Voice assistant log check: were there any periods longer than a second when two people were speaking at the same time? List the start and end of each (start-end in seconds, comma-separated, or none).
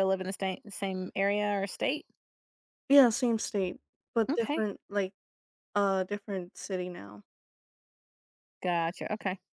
none